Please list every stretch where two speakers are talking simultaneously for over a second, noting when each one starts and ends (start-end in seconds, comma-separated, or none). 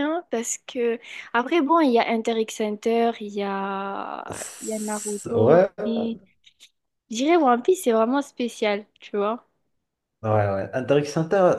4.3-5.7